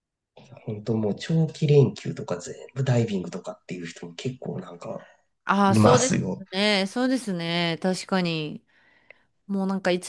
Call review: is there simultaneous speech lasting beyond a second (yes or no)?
no